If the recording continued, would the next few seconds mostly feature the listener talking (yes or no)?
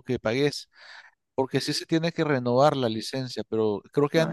no